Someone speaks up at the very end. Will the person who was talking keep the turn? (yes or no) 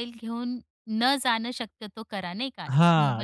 no